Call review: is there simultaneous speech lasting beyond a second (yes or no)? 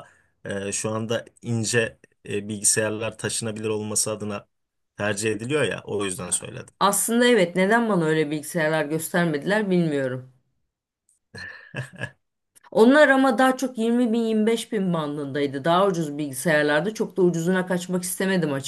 no